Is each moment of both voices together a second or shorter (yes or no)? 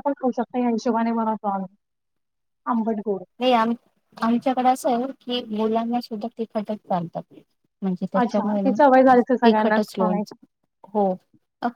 no